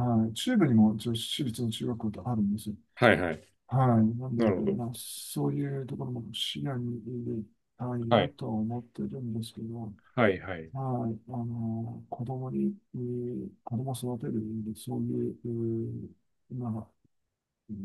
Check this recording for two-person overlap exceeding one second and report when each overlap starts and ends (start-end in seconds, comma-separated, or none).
none